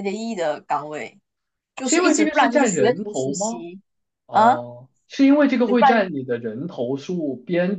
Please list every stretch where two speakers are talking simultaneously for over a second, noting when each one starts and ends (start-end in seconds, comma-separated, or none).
1.8-3.6